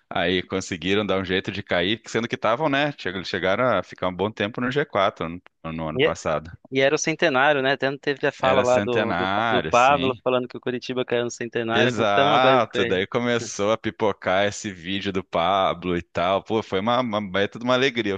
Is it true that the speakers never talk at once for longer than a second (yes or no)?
no